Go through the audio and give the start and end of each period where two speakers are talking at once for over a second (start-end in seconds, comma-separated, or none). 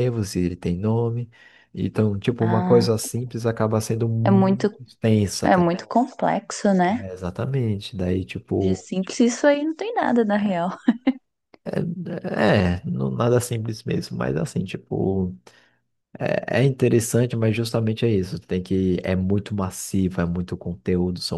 none